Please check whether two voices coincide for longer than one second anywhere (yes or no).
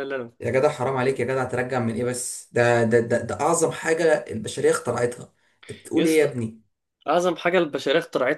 no